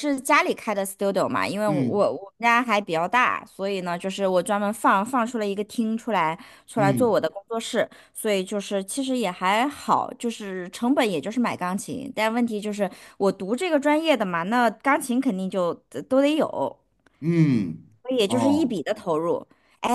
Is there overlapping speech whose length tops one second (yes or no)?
no